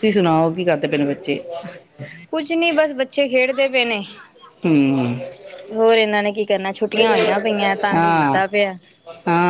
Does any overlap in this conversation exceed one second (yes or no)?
no